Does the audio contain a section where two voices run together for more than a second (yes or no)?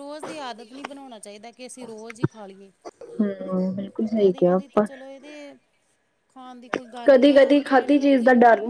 no